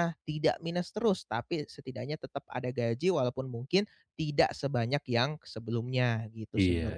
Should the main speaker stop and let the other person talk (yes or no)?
yes